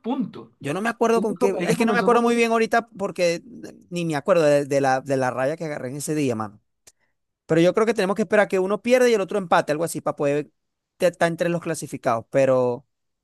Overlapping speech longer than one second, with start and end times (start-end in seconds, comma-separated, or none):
1.1-2.5